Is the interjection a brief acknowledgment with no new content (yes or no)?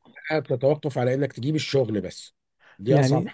no